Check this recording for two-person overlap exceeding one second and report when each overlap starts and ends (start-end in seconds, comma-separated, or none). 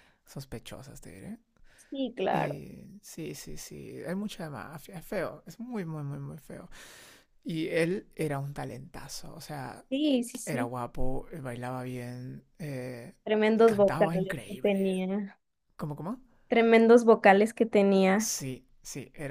13.7-14.9